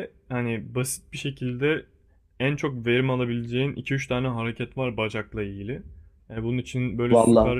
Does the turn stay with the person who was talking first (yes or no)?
yes